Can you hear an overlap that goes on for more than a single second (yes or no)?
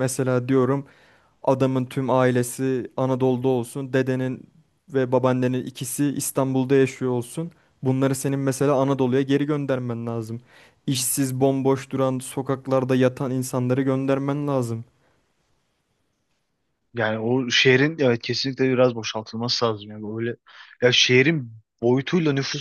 no